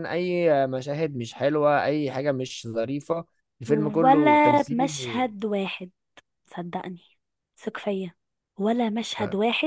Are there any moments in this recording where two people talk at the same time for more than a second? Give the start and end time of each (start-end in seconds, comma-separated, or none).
3.7-5.3